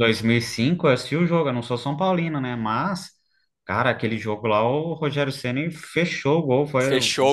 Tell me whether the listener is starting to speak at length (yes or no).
yes